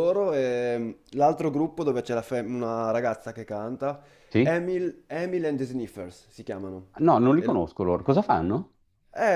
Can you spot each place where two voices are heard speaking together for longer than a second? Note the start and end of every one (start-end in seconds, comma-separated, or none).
none